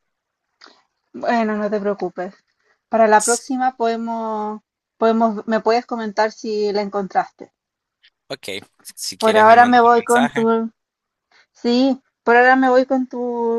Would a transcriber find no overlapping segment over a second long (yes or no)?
no